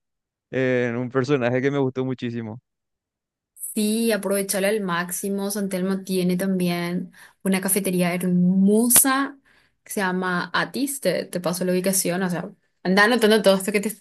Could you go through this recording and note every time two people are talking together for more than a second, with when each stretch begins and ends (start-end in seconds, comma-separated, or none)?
none